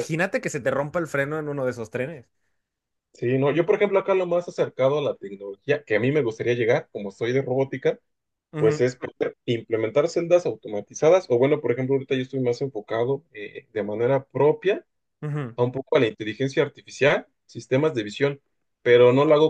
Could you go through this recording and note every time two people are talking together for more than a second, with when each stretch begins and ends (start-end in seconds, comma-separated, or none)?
none